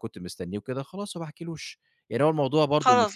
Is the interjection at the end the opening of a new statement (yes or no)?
yes